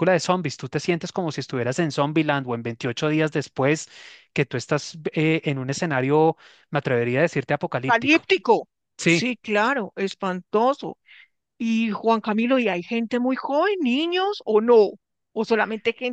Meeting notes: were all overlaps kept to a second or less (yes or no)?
yes